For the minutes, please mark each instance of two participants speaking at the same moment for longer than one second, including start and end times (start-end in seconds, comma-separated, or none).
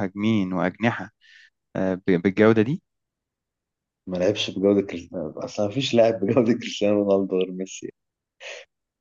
none